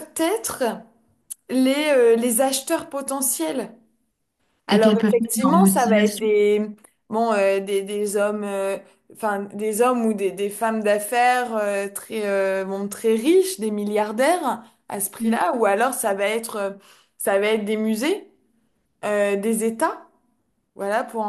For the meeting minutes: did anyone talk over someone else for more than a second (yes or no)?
yes